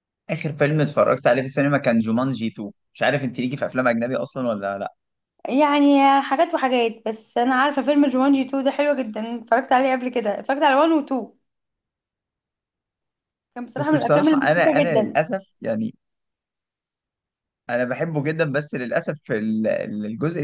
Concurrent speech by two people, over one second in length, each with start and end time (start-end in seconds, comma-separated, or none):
13.8-15.2